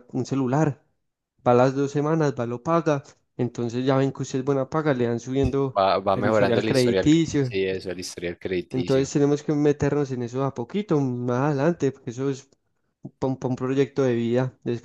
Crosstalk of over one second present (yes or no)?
yes